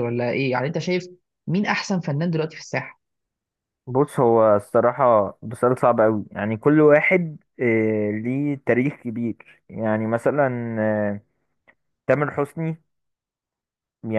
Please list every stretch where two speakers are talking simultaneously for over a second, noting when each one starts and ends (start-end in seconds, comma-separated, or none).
none